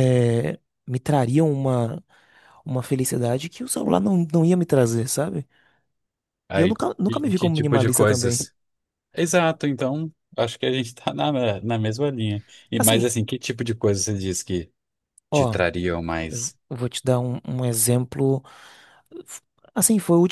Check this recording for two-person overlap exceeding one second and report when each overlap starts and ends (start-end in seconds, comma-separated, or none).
6.5-8.5